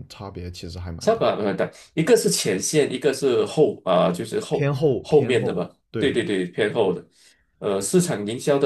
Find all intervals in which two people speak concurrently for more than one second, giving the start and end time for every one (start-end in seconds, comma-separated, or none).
4.5-6.2